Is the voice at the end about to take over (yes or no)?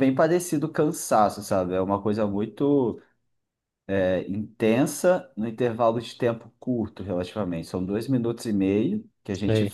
no